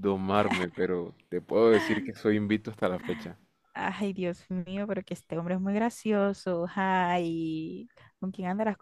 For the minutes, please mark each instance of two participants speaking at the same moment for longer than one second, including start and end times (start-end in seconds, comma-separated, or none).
none